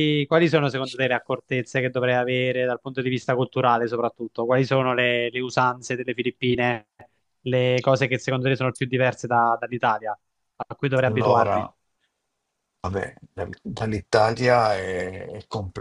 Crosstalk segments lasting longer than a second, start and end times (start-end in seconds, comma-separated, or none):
none